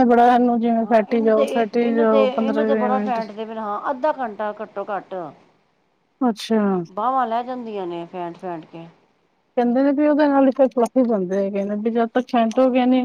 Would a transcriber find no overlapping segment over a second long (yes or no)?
no